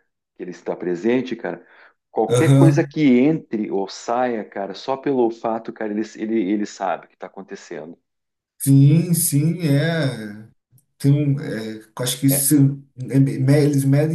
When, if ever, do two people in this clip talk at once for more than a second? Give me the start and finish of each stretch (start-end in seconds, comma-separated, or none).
none